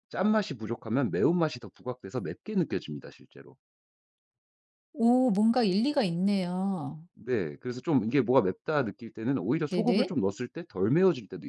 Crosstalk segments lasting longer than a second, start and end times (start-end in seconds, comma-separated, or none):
none